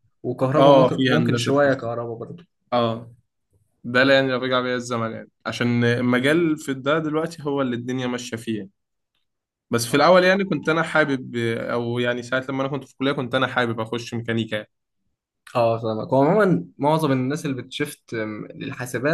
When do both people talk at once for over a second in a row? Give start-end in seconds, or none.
0.6-1.9